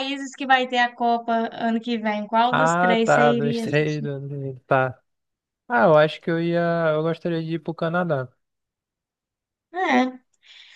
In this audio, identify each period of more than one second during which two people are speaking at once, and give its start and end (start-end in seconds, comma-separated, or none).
2.5-4.1